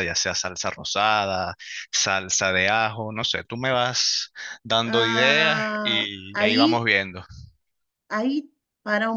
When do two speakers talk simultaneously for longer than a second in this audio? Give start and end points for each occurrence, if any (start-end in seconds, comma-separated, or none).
4.8-6.8